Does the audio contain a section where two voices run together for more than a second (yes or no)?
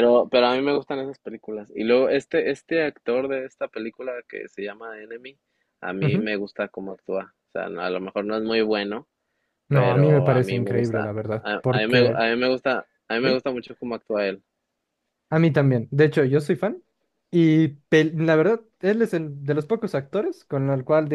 yes